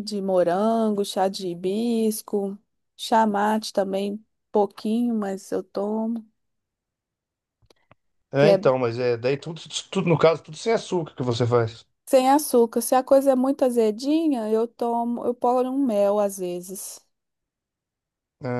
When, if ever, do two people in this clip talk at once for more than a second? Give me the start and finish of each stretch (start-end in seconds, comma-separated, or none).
none